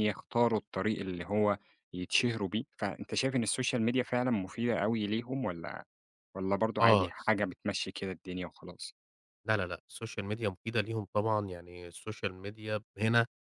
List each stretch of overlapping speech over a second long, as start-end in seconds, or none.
none